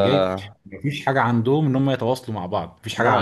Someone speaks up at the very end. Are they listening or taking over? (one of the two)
listening